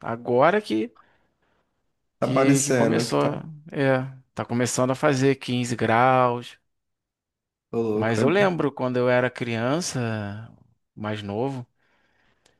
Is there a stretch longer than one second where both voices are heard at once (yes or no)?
yes